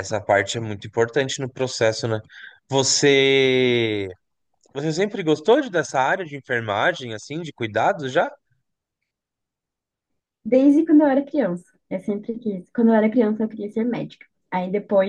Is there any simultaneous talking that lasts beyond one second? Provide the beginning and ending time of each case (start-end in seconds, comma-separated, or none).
none